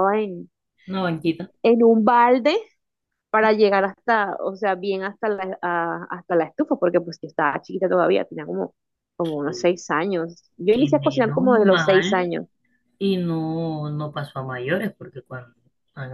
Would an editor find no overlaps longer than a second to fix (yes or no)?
no